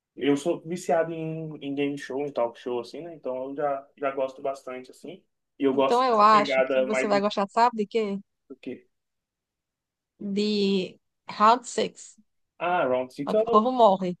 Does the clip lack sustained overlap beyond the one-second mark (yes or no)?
no